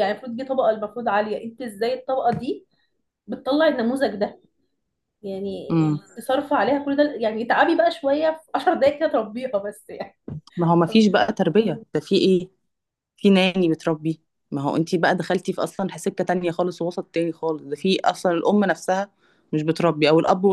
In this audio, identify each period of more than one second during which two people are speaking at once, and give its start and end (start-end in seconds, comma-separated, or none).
none